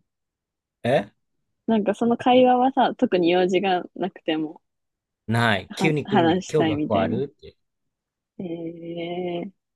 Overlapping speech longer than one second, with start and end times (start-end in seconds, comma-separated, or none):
5.7-7.2